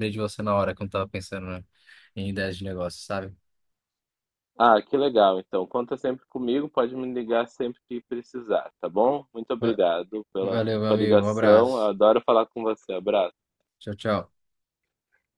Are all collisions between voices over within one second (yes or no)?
no